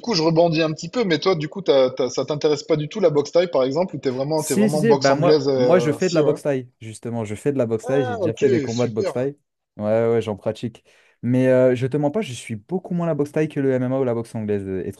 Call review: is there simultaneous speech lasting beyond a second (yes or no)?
yes